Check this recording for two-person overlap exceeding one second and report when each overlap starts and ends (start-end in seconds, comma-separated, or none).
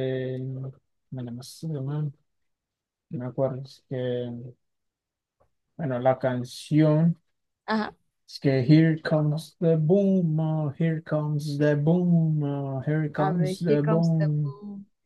13.2-14.5